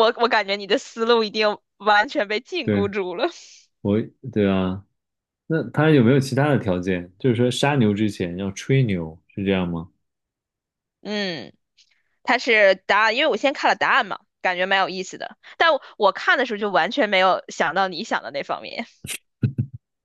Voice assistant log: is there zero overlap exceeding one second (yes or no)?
yes